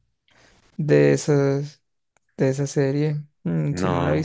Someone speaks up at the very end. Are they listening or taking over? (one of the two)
listening